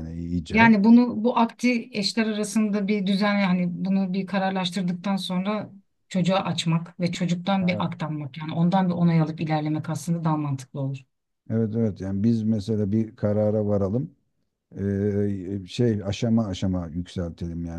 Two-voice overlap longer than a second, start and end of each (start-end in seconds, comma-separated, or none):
none